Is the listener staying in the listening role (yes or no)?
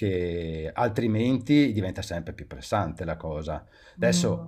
no